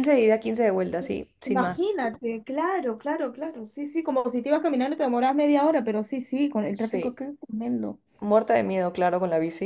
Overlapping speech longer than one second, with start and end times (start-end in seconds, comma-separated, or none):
none